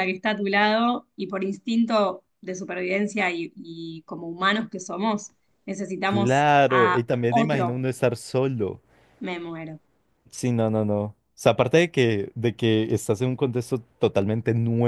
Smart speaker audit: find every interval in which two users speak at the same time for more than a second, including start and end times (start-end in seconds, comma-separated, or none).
6.1-7.8